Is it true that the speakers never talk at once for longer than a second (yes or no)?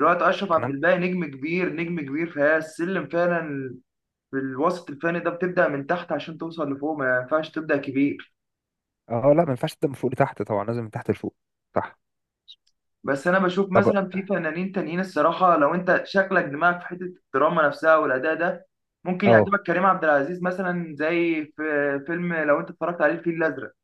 yes